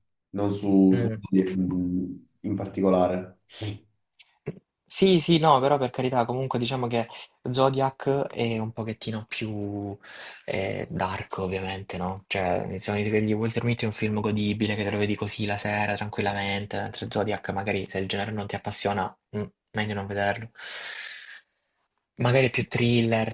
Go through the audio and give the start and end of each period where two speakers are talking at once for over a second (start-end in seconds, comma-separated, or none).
none